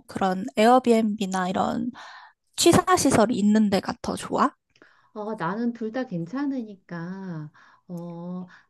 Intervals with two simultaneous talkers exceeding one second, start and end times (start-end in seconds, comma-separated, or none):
none